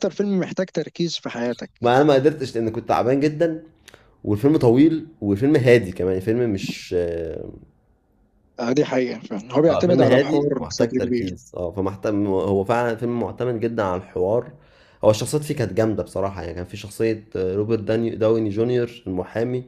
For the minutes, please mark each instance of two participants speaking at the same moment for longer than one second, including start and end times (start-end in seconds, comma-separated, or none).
9.7-11.3